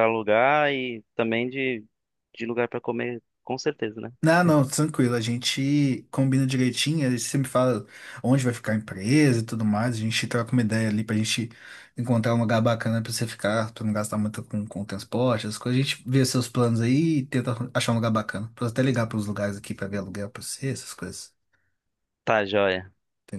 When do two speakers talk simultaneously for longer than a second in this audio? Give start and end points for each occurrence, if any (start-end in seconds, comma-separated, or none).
none